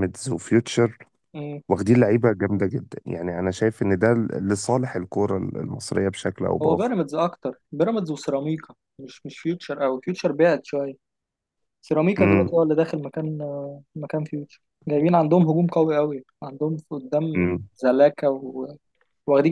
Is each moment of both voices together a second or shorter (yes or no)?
yes